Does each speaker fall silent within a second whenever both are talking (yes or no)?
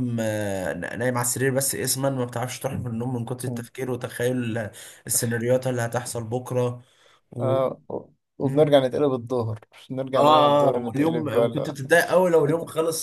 no